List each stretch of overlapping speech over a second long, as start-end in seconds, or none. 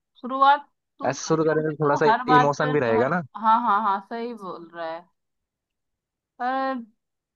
1.1-3.1